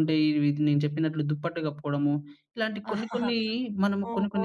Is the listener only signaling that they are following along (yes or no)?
no